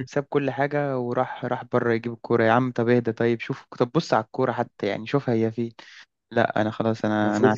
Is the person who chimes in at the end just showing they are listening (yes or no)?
no